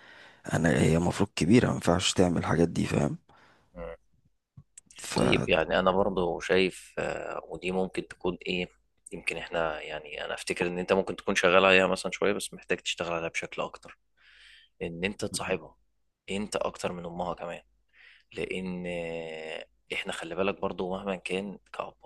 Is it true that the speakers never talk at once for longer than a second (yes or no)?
yes